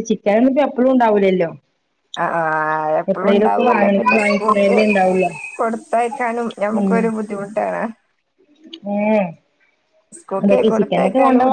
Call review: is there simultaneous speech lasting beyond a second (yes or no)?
yes